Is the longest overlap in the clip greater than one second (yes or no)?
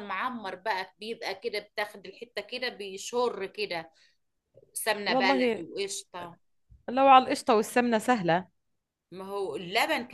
no